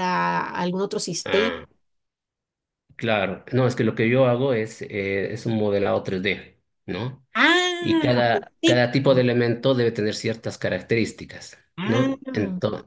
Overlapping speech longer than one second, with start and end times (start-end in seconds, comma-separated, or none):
7.8-9.2